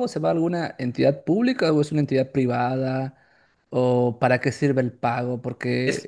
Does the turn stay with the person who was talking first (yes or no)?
yes